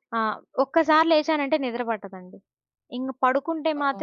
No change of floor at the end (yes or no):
yes